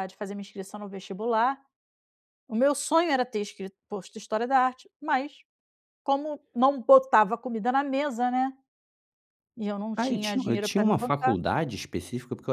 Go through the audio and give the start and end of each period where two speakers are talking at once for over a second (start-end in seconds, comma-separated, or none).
10.0-11.4